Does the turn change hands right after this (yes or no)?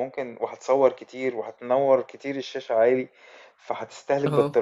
no